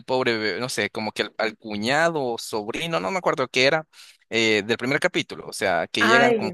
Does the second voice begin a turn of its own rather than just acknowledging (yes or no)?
no